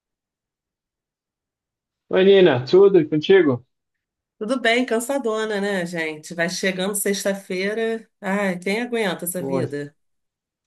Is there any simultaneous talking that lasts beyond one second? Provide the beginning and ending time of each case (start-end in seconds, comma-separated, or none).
none